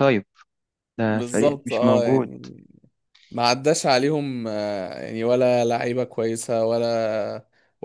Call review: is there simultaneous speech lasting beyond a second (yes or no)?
yes